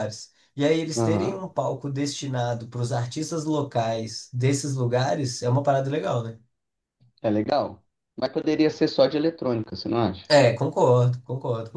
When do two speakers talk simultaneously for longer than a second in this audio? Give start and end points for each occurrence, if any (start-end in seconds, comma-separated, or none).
none